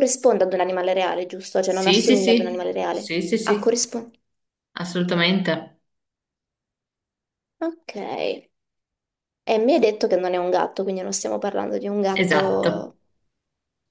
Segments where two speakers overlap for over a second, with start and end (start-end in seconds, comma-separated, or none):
1.6-3.9